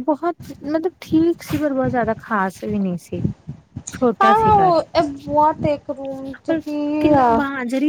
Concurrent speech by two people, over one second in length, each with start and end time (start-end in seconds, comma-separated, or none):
none